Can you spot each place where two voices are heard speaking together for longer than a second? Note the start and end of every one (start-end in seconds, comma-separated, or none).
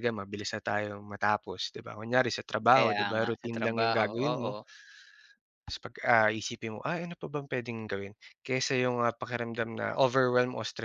2.7-4.5